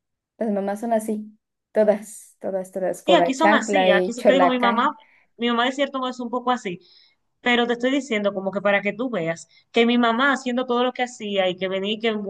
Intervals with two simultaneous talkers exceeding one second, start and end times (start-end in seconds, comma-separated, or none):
3.0-4.9